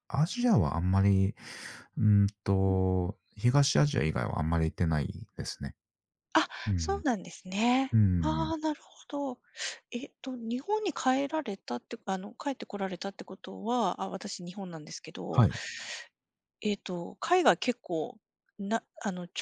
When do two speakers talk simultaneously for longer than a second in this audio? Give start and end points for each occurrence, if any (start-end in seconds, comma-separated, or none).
none